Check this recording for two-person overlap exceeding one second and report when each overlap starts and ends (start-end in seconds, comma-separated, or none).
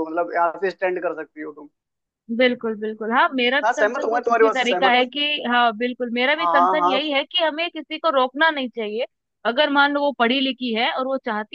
3.6-5.0